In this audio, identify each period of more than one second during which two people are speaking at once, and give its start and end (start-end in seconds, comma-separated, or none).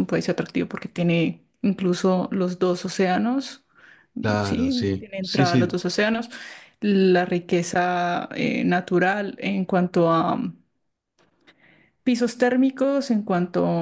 4.4-5.8